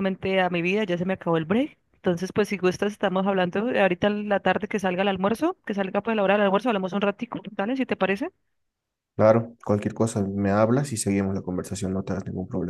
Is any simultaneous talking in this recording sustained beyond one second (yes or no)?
no